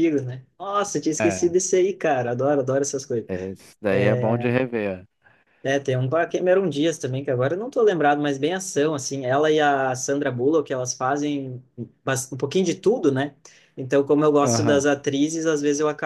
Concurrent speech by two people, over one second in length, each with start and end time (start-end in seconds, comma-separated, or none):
none